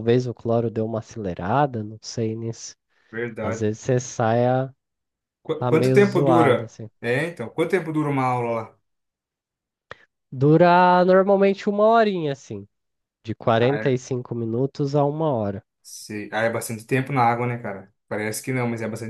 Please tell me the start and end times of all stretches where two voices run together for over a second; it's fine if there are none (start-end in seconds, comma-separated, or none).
5.6-6.9